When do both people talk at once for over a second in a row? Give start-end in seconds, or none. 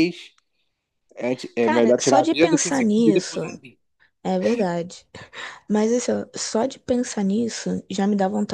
1.6-3.4